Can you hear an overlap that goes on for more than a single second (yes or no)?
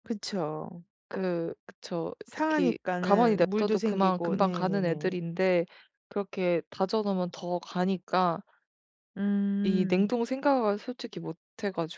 yes